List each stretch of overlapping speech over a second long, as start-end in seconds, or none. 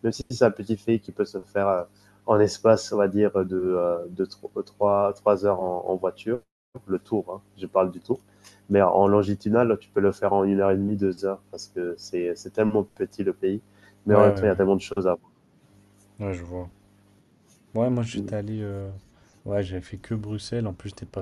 none